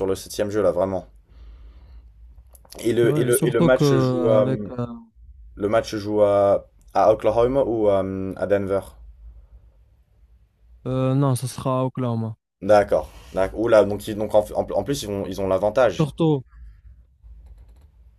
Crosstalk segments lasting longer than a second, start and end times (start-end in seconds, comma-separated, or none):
3.0-4.5